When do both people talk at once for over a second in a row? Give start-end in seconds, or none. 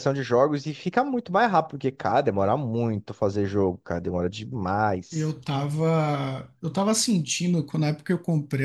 none